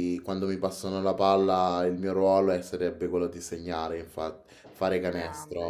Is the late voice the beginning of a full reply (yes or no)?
yes